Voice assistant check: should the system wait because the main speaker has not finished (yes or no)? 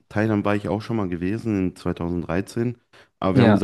yes